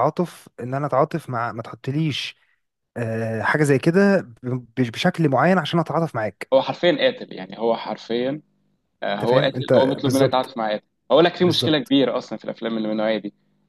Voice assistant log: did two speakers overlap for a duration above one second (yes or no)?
yes